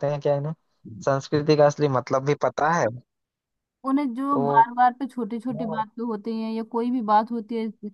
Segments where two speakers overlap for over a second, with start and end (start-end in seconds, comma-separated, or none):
none